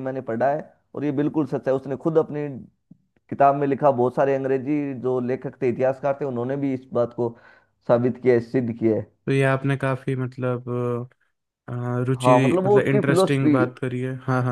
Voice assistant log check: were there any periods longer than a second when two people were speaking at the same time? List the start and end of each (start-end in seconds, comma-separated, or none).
12.2-13.5